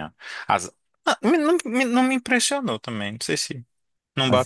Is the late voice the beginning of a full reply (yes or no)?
yes